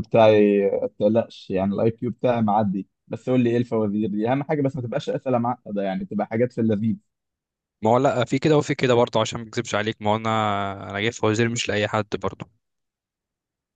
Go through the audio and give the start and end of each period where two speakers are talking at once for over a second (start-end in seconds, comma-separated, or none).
none